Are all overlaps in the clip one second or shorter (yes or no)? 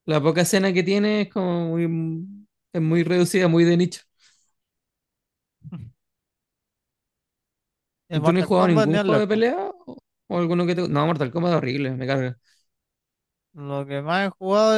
no